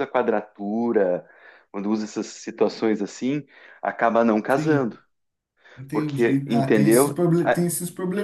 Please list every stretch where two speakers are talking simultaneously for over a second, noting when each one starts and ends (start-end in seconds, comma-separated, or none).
5.9-7.7